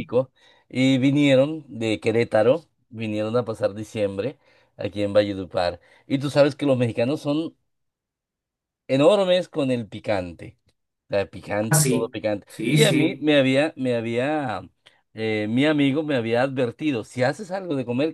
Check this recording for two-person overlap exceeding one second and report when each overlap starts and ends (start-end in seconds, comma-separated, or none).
11.7-13.2